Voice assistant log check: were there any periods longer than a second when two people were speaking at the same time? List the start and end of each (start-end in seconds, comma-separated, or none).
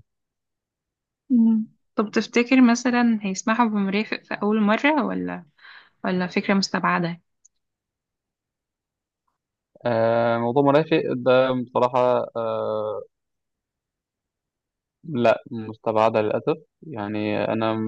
none